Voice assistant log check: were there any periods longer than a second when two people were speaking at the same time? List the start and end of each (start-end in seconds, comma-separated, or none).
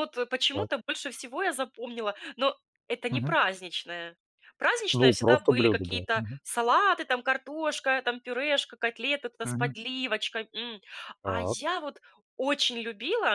4.9-6.4